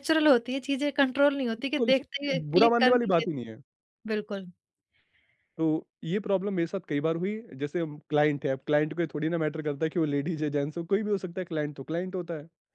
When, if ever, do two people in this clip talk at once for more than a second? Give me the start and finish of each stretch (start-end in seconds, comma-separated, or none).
1.6-3.5